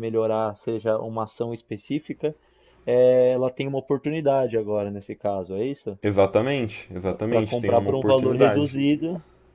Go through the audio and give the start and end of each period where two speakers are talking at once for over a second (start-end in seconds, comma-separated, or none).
7.3-8.8